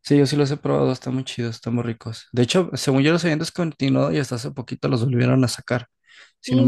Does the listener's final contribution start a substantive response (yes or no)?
yes